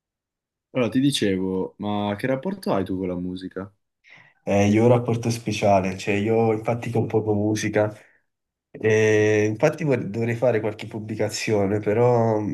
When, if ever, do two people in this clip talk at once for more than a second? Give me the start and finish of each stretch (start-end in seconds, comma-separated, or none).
none